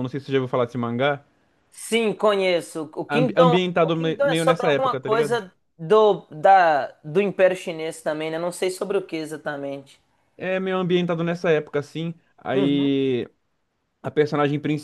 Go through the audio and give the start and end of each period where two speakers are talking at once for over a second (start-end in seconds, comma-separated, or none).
3.1-5.4